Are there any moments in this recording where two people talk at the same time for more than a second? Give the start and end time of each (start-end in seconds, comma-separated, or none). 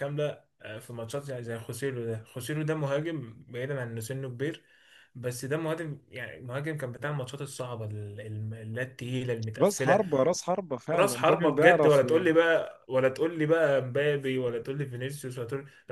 10.9-12.4